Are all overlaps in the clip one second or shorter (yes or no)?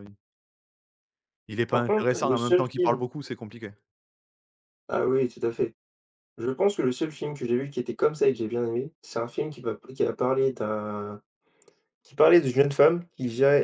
no